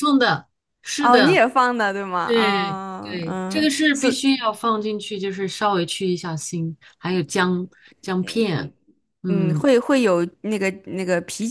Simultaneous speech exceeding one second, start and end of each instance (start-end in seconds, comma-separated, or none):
2.2-4.2